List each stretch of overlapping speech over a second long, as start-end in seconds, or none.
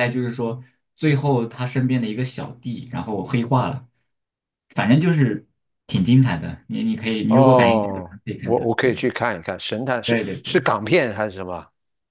7.3-9.0